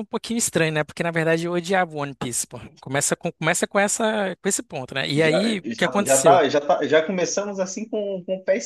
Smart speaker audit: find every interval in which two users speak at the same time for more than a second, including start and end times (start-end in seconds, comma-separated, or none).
5.1-6.4